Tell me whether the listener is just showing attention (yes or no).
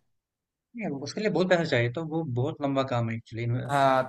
no